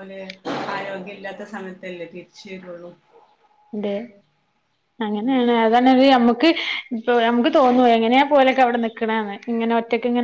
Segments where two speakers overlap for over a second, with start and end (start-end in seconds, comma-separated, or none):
none